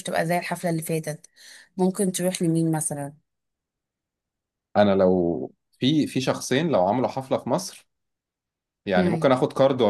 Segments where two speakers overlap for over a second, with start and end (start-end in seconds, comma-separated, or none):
none